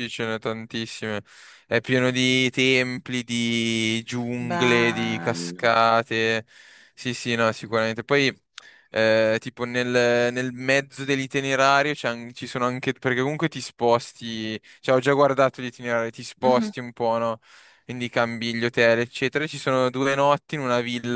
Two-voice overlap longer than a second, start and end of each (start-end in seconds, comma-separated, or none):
4.5-5.7